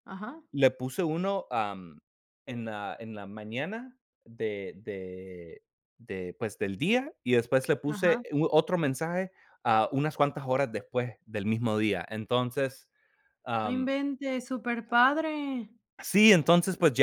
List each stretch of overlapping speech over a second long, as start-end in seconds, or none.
none